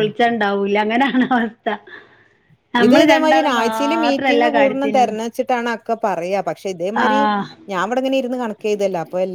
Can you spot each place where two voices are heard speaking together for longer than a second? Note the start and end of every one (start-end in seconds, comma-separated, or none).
2.9-5.1